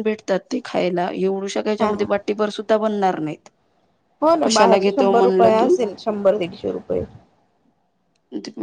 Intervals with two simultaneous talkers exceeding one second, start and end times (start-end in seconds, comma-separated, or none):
4.4-5.8